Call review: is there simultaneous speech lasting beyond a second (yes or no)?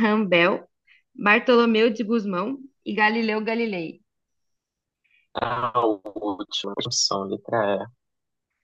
no